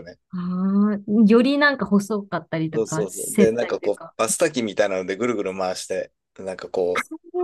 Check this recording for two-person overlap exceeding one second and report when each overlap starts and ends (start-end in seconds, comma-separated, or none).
2.7-4.1